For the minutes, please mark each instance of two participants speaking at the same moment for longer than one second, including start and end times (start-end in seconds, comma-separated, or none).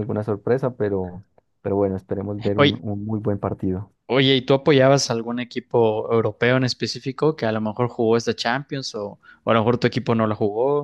none